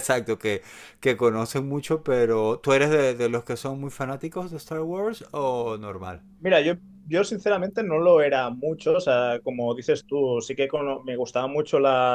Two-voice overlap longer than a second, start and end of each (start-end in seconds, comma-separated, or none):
none